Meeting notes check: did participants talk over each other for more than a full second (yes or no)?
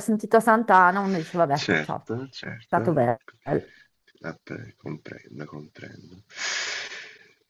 yes